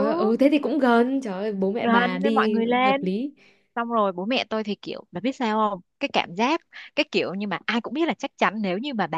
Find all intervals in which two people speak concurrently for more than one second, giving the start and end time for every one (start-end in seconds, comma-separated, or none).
1.8-3.1